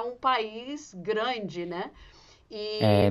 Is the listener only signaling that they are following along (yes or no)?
yes